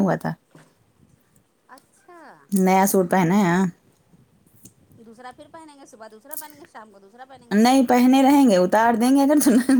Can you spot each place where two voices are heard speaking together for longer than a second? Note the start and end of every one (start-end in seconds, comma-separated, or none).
none